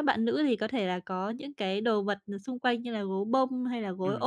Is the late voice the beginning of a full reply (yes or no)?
no